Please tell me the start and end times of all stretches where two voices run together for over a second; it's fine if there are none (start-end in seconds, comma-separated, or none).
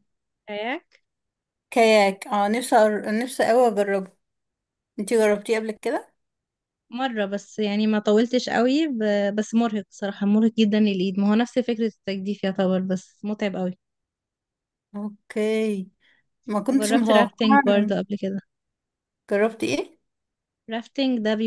16.7-17.9